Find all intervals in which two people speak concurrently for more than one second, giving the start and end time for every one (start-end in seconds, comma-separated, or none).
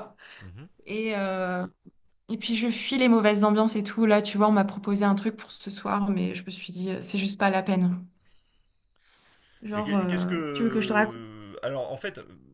9.7-11.2